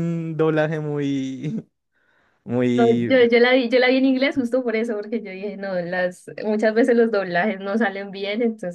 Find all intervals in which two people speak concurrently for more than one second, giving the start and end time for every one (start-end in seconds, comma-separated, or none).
none